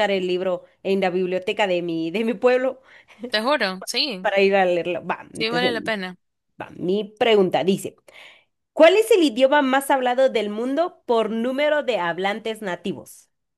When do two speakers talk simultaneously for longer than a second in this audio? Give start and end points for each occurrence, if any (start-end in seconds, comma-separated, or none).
none